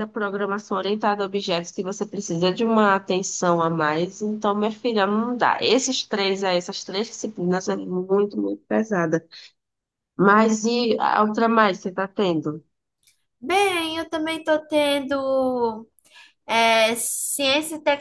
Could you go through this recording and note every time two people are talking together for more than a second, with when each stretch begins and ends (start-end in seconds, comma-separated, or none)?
none